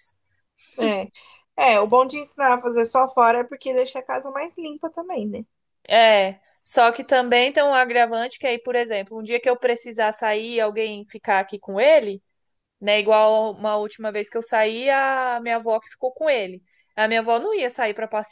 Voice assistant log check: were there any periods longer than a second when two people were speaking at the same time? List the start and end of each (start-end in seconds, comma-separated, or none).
none